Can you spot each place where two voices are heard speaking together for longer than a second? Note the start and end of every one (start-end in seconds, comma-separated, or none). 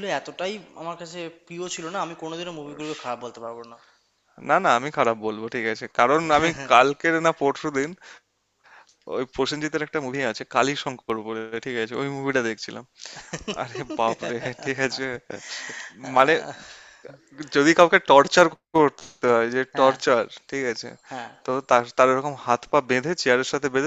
none